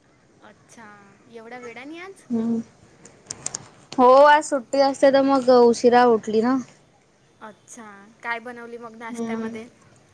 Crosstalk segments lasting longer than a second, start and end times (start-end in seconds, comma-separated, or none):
none